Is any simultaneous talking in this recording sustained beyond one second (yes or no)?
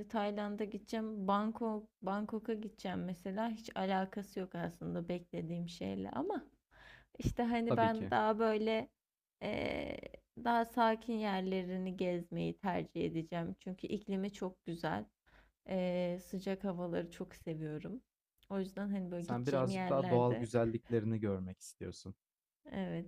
yes